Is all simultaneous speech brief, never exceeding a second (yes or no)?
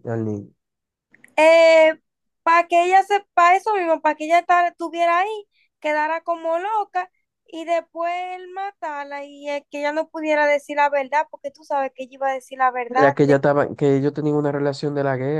yes